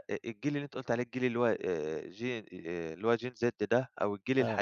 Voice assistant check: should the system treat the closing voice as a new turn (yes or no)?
no